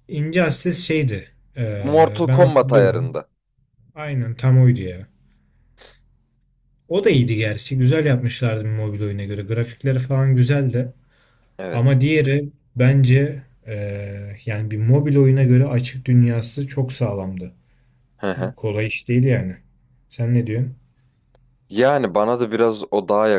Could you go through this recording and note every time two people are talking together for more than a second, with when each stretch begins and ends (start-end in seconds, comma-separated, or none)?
1.8-3.2